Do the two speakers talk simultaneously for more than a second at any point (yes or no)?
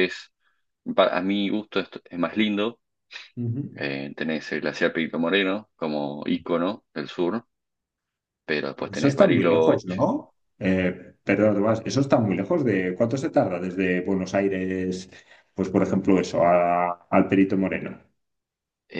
yes